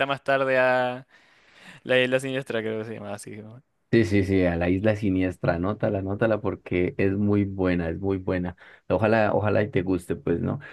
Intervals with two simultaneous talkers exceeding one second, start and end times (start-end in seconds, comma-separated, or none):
none